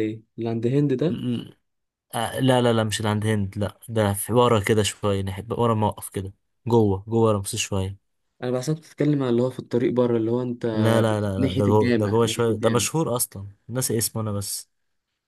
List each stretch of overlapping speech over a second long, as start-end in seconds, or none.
11.4-12.8